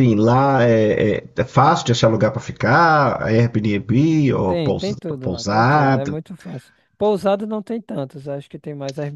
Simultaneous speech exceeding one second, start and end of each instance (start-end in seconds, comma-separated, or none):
4.5-6.2